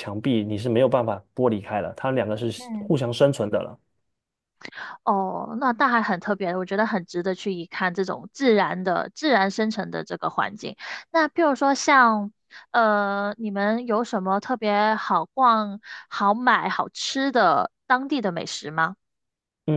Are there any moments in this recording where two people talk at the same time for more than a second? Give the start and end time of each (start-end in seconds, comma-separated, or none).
none